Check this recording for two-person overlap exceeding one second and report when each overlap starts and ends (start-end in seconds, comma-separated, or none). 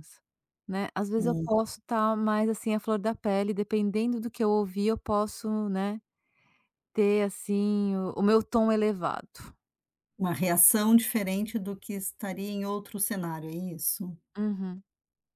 none